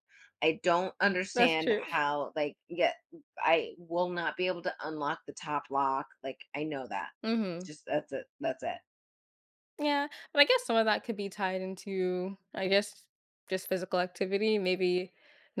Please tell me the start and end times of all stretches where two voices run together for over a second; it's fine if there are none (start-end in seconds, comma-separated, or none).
none